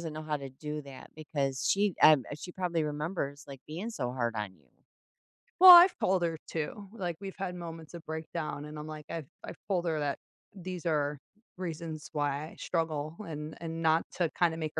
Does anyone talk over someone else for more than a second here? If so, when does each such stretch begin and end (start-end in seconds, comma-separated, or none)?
none